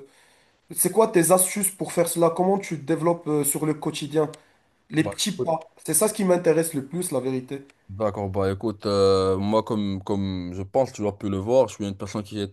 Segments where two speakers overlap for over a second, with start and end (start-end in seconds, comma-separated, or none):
none